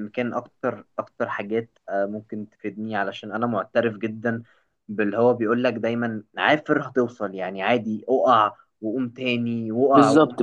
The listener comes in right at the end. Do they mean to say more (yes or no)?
yes